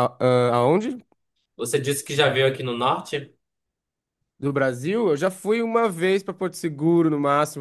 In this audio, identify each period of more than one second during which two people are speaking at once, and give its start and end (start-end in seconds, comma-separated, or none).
none